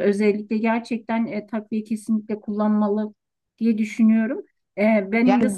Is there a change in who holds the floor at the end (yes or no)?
no